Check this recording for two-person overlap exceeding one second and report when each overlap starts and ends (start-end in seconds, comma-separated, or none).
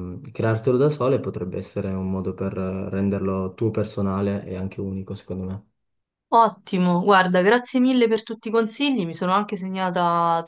none